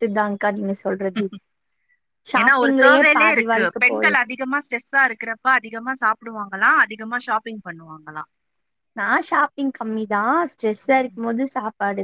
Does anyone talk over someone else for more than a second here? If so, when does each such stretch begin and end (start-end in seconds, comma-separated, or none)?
2.4-4.2